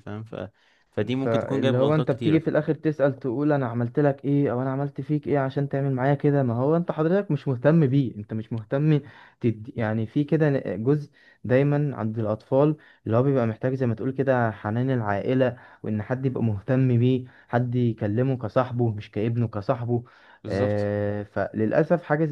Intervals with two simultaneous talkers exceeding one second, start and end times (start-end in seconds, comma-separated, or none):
1.1-2.4